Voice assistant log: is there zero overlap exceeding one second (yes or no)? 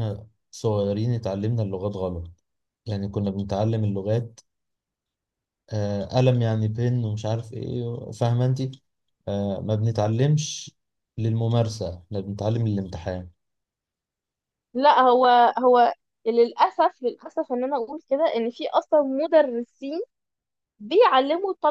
yes